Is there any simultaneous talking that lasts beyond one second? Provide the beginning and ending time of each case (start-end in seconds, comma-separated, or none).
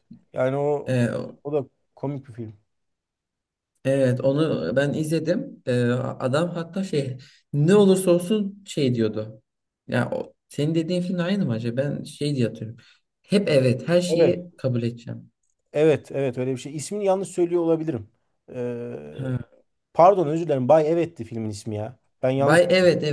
none